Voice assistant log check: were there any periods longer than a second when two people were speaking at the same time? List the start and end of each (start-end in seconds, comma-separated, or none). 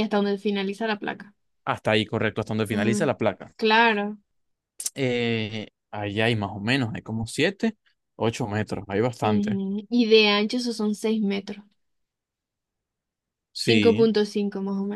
none